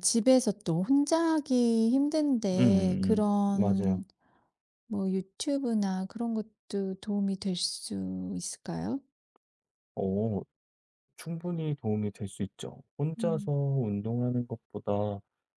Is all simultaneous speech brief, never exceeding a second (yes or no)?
no